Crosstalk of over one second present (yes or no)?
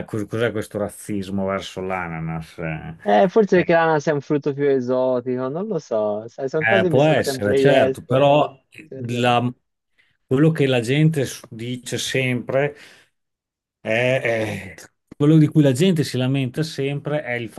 yes